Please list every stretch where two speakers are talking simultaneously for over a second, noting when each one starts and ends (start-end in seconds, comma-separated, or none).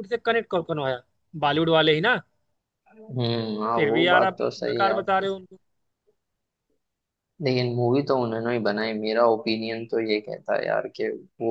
3.7-5.3